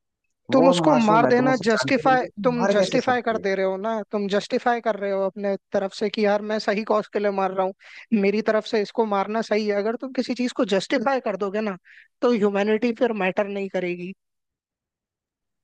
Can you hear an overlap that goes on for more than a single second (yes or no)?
yes